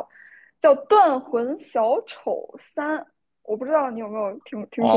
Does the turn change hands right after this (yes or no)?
yes